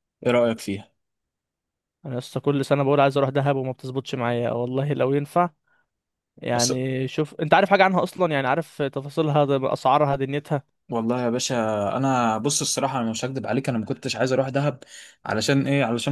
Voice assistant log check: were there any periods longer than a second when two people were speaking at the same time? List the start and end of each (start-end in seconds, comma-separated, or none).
none